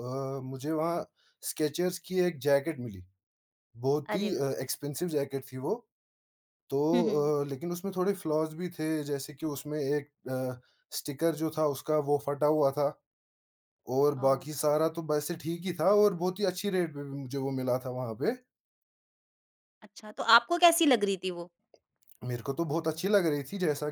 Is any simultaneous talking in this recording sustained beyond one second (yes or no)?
no